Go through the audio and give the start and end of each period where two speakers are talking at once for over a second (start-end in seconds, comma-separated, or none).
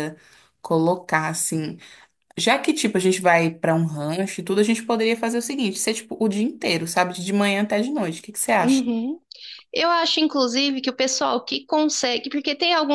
none